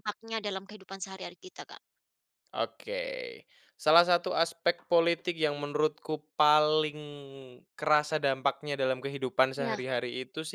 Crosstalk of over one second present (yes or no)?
no